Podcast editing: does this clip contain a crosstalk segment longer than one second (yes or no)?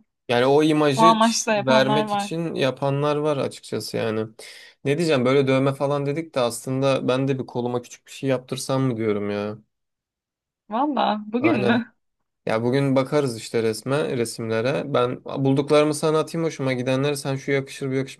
yes